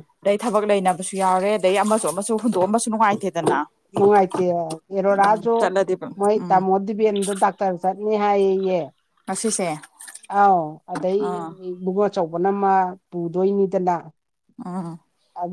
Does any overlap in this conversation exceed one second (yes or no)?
no